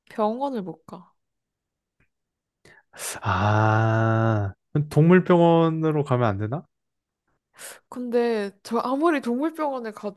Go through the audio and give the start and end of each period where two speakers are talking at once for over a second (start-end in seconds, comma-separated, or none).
none